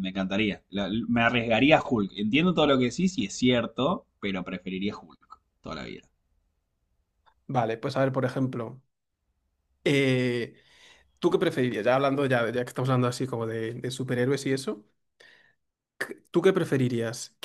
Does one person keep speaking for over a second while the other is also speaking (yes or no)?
no